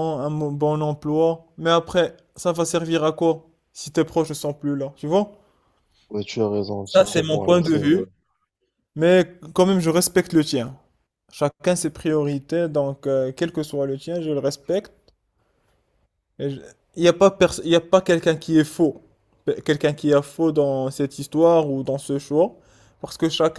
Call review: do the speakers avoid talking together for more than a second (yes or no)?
no